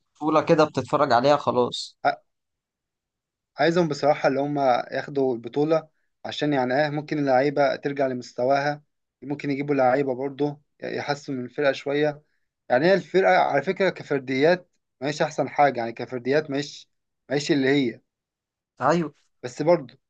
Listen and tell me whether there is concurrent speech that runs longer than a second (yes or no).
no